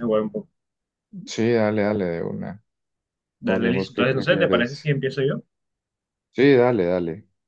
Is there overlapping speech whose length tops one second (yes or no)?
yes